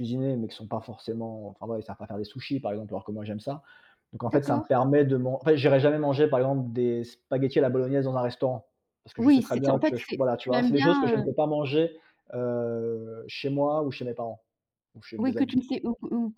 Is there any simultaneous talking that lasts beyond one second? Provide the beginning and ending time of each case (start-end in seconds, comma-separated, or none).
9.2-11.3